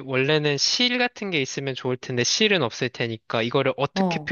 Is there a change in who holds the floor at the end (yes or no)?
no